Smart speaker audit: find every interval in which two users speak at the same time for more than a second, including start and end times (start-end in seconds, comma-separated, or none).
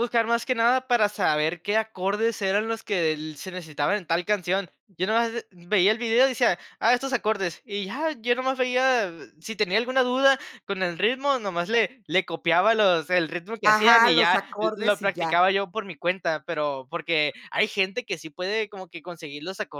13.6-15.4